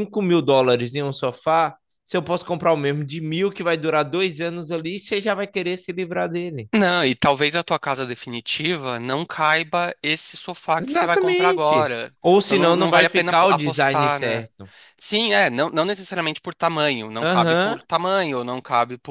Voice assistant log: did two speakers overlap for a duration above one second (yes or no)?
yes